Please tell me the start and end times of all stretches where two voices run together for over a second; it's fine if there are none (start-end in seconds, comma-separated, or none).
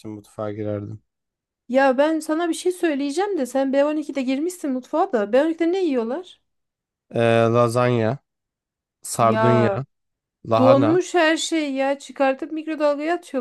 none